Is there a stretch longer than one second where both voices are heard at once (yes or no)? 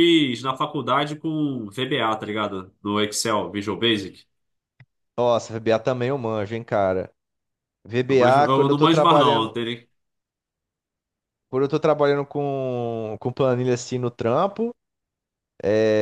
yes